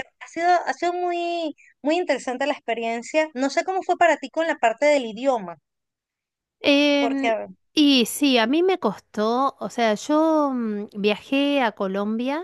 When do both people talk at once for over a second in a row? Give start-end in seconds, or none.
none